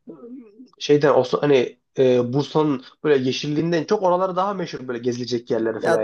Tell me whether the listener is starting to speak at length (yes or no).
yes